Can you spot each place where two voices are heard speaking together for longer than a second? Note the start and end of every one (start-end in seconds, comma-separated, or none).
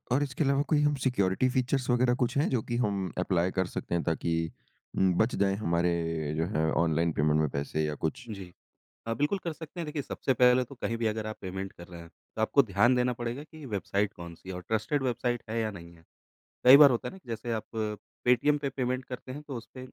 none